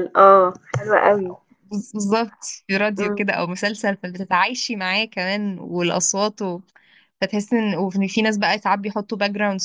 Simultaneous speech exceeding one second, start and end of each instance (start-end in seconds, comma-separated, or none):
none